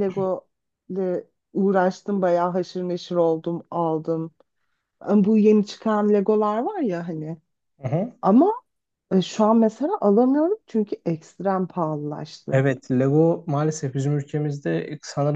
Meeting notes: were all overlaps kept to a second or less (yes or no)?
yes